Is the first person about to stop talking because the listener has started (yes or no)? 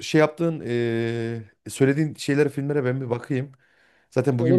no